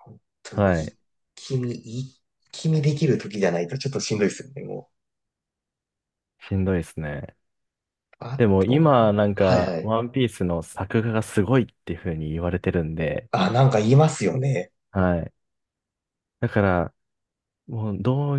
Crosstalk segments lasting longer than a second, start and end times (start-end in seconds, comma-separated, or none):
8.4-10.0